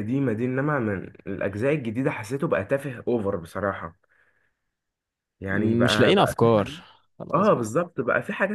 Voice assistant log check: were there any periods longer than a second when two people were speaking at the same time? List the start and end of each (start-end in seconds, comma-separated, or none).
5.5-6.7